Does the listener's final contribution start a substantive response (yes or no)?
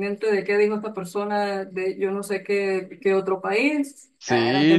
yes